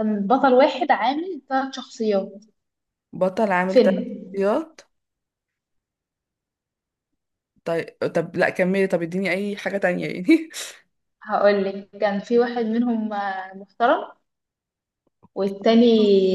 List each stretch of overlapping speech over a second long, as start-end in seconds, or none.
none